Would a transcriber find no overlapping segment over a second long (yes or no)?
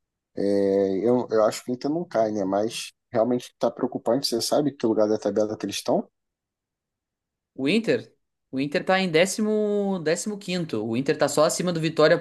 yes